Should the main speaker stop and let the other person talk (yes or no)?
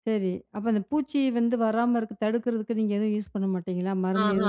yes